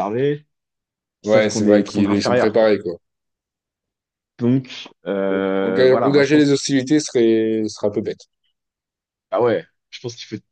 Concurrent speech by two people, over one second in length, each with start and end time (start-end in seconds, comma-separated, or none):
1.2-2.7, 5.3-6.7